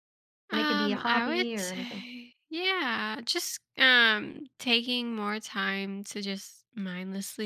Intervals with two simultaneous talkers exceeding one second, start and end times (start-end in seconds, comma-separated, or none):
0.5-2.1